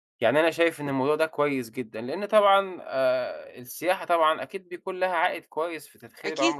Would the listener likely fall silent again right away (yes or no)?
no